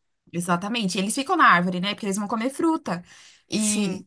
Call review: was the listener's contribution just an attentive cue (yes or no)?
yes